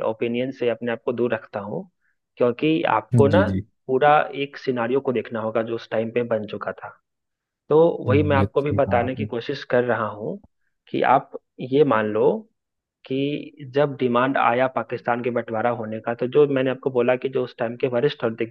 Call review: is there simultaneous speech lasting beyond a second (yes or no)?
yes